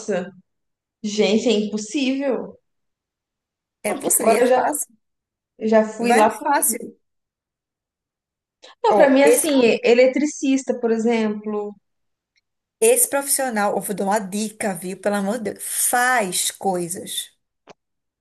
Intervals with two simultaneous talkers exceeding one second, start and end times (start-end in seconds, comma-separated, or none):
none